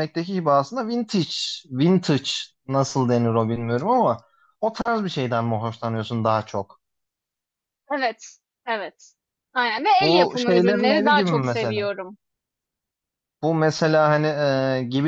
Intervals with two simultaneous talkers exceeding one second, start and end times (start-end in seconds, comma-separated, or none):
10.0-11.8